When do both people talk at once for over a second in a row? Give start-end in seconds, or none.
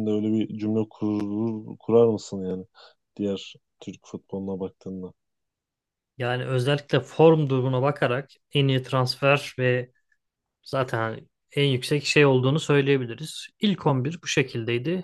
none